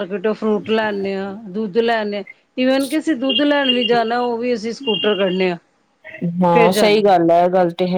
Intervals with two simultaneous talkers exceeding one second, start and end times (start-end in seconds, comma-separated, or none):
none